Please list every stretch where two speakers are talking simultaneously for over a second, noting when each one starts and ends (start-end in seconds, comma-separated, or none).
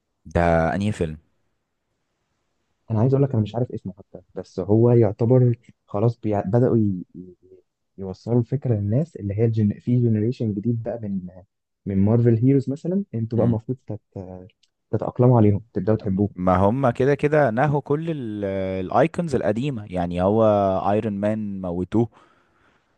none